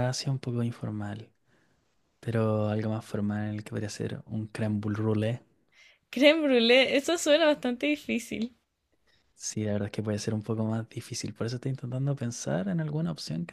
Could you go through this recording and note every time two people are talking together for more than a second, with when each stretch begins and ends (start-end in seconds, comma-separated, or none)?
none